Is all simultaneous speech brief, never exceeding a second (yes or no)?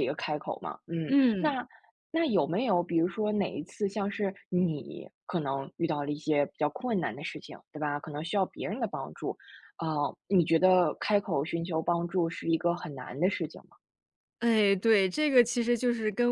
yes